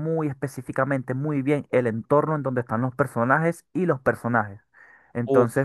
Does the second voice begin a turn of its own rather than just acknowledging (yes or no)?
no